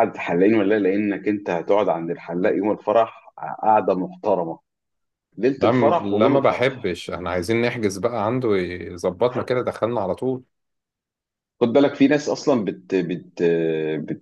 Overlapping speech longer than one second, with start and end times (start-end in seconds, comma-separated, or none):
5.6-6.9